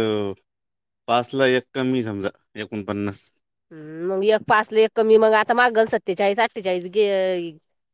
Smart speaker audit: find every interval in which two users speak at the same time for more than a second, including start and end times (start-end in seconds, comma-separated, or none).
none